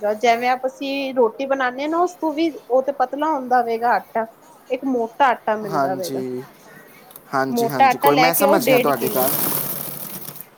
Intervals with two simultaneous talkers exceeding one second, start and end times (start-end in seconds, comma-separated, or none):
7.5-9.3